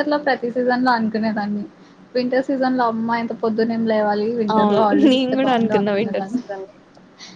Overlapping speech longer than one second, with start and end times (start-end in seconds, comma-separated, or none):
4.5-6.4